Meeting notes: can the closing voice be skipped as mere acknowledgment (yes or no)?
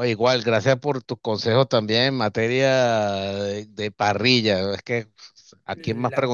yes